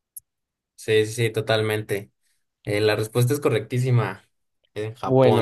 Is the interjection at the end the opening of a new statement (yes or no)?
yes